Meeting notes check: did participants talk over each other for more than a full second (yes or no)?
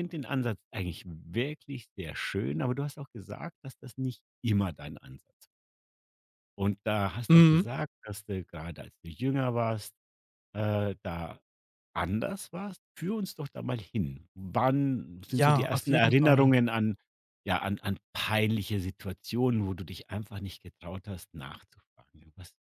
yes